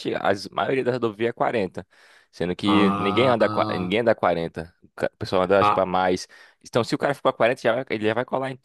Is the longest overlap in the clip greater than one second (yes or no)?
yes